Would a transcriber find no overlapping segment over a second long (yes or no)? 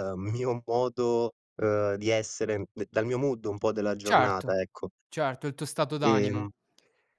yes